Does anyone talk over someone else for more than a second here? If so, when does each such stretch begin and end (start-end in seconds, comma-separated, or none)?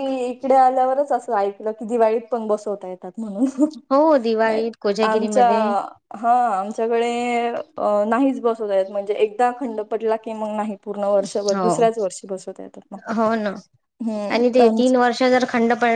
none